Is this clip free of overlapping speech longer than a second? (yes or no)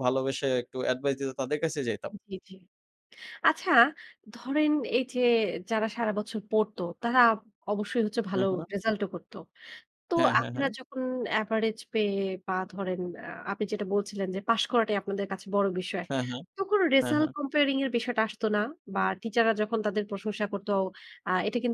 yes